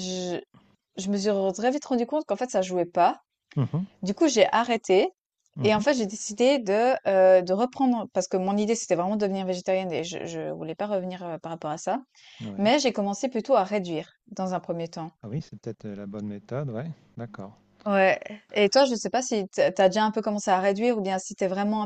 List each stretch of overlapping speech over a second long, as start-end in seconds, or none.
none